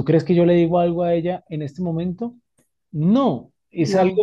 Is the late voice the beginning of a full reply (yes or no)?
no